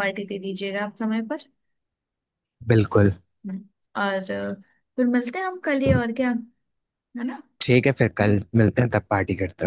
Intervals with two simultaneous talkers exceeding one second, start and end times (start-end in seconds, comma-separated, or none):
none